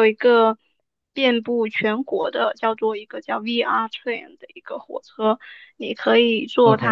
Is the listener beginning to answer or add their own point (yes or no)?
no